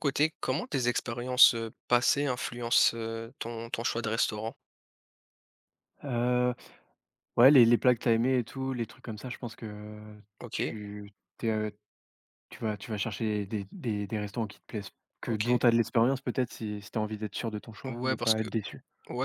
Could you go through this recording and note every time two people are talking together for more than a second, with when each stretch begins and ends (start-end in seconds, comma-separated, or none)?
none